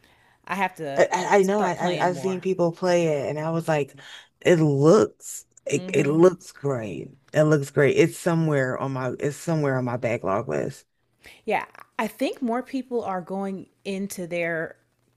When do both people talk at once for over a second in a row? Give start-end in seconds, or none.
0.9-2.4